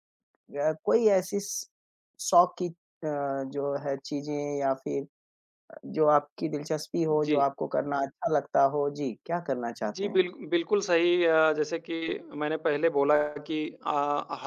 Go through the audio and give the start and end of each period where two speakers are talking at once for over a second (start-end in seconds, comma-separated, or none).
none